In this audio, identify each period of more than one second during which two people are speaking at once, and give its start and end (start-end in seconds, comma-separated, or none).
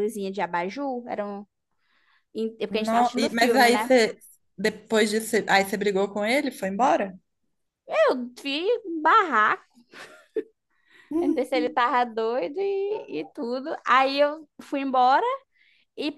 2.7-4.0